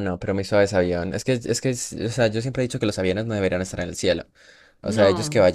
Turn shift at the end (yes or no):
no